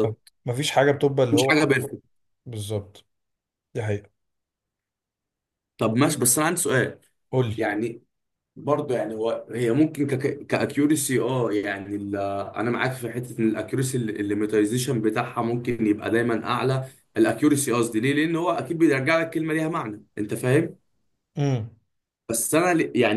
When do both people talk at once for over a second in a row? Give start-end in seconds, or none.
none